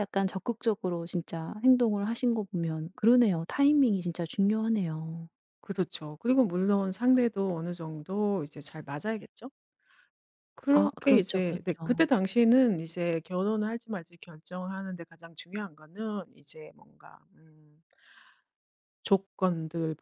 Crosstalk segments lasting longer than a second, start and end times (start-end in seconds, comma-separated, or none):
10.7-12.1